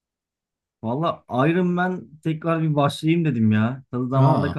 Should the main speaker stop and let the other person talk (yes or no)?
no